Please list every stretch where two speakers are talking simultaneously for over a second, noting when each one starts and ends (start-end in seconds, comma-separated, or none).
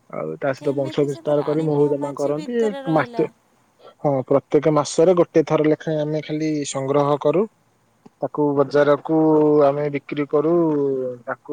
0.6-3.2